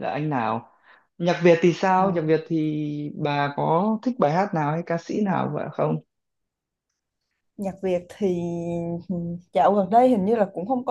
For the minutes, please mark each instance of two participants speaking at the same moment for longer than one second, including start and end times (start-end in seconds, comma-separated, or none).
none